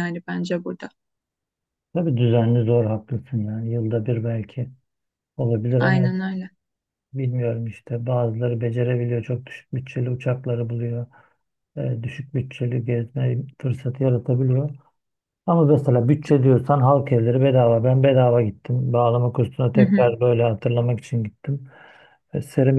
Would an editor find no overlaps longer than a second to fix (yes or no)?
yes